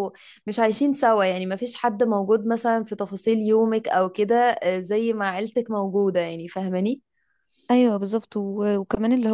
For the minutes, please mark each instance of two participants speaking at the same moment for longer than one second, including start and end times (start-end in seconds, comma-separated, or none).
none